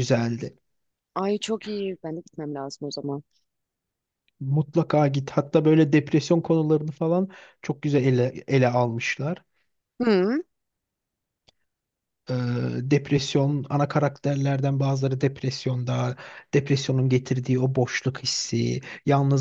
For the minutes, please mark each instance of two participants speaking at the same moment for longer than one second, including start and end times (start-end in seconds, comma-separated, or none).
none